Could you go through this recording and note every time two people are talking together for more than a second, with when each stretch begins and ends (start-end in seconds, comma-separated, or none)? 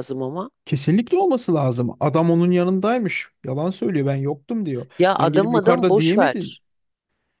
5.0-6.6